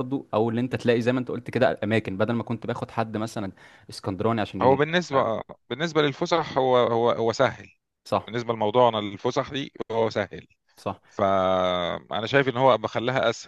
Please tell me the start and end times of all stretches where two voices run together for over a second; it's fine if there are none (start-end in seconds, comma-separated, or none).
none